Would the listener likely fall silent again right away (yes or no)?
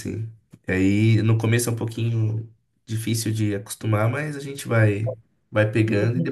yes